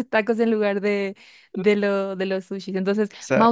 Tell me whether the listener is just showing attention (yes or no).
yes